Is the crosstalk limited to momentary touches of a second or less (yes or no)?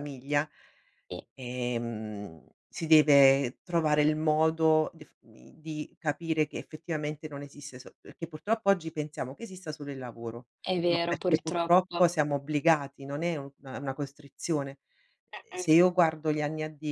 no